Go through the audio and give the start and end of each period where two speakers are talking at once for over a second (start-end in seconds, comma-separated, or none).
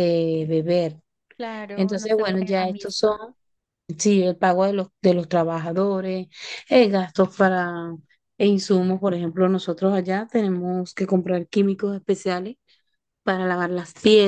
1.8-3.2